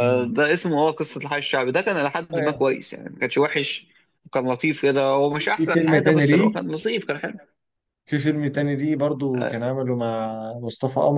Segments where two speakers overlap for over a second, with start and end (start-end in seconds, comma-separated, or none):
5.3-6.6